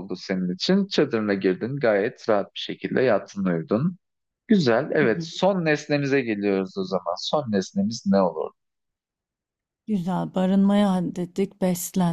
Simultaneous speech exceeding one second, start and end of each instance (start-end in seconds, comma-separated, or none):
none